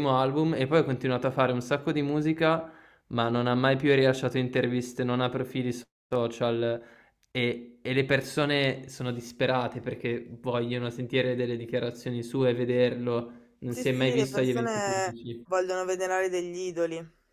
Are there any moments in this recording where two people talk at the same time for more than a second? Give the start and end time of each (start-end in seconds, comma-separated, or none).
13.7-15.4